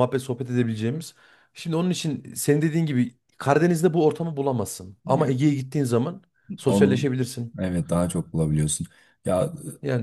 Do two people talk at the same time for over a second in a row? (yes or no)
no